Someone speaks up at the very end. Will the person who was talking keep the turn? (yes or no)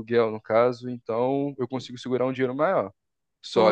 yes